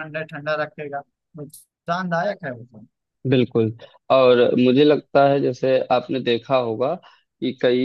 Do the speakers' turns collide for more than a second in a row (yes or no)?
no